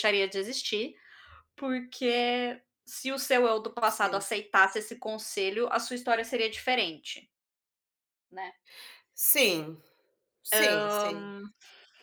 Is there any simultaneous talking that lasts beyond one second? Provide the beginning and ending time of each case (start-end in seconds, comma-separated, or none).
none